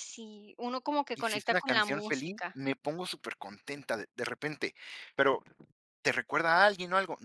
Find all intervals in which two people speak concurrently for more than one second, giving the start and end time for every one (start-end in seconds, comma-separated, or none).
1.1-2.5